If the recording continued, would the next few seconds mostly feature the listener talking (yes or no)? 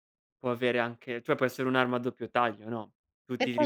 no